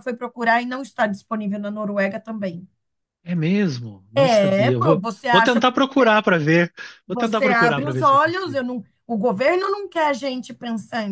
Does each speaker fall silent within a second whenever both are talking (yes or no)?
no